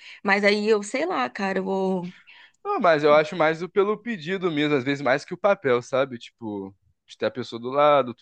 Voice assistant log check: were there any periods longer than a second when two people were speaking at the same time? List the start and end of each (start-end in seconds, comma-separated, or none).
none